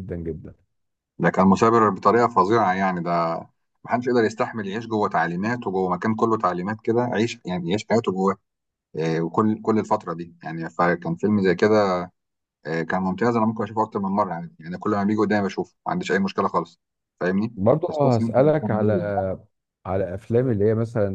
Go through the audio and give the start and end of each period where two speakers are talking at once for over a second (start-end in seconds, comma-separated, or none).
17.6-18.9